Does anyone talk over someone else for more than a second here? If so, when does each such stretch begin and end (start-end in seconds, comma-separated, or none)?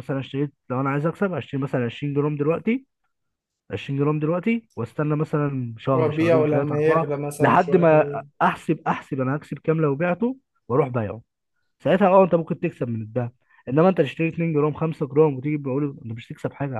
6.0-8.3